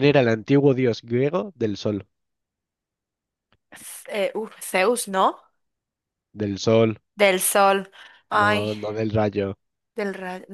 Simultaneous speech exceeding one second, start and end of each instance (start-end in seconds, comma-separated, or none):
none